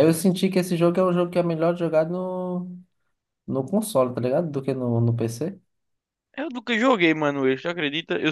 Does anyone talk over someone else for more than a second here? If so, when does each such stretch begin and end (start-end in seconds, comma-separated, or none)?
none